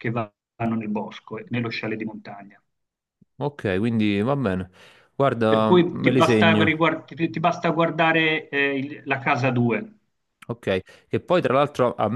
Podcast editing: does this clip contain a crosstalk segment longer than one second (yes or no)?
yes